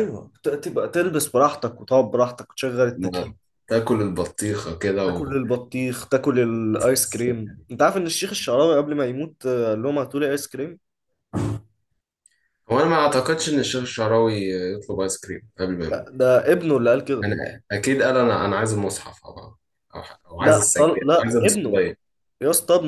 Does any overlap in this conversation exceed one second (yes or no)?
yes